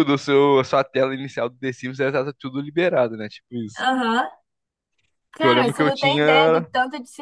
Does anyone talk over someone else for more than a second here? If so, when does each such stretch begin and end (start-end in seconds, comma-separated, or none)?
5.4-6.7